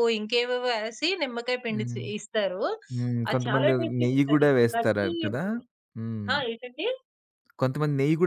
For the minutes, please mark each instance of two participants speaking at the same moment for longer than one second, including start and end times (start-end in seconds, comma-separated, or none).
3.3-5.4